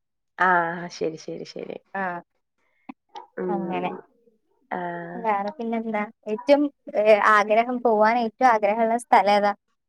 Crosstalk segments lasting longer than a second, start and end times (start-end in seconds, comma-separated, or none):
none